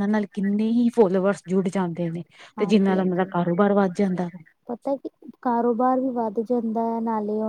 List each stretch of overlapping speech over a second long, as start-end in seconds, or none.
none